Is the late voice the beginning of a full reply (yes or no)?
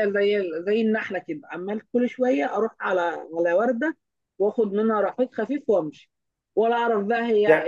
yes